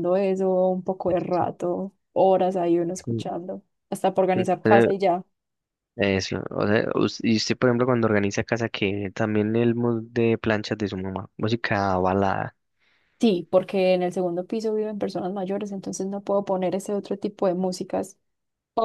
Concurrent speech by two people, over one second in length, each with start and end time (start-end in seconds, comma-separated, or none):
none